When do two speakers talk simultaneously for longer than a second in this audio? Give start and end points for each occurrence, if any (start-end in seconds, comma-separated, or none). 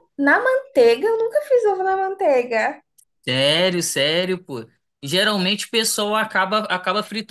none